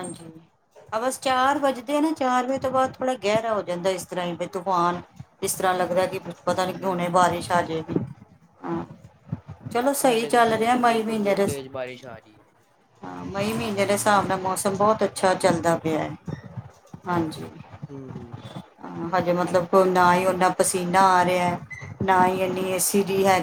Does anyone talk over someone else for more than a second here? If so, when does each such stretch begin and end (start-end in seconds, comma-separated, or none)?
none